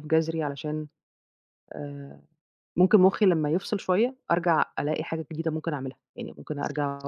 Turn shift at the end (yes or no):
no